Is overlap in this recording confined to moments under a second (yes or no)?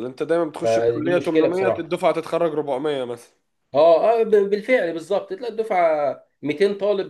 no